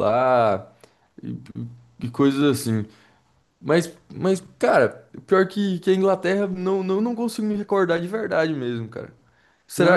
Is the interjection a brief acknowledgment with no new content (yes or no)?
no